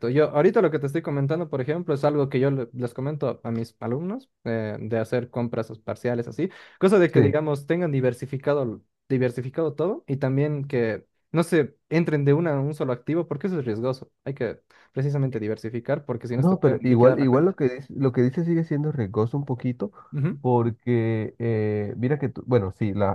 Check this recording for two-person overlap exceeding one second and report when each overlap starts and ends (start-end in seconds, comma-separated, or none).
16.4-17.6